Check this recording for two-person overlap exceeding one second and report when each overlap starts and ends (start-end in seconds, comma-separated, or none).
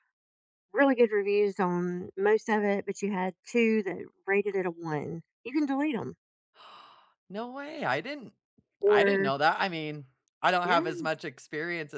none